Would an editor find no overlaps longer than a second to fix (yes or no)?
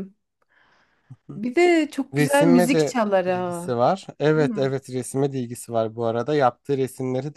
no